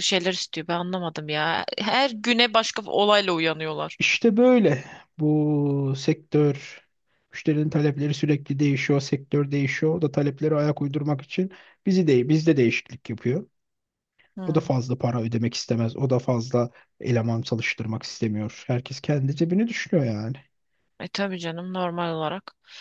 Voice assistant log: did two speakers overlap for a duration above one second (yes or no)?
no